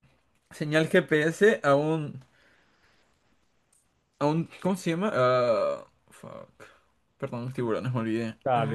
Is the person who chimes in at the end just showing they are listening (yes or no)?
no